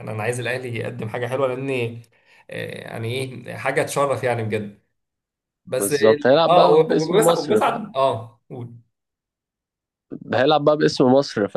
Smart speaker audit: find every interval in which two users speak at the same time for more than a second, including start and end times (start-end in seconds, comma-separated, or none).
5.8-7.9